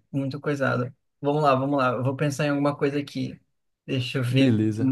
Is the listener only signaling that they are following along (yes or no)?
yes